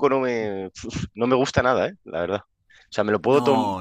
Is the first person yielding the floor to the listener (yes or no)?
no